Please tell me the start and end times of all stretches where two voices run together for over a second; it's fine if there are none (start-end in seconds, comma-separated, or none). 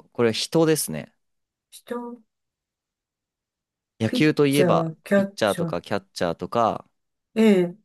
4.0-5.8